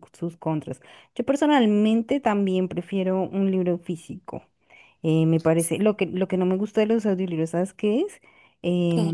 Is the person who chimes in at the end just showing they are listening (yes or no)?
yes